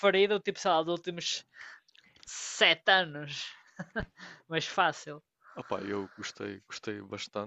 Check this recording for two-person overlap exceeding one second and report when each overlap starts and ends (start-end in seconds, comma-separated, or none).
none